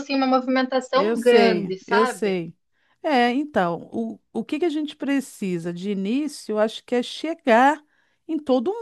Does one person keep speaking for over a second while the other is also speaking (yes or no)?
yes